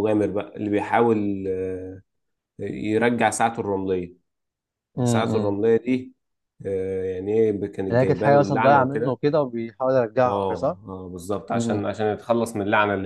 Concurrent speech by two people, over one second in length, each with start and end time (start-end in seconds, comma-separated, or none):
7.9-9.2